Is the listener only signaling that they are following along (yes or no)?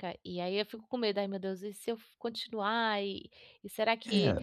no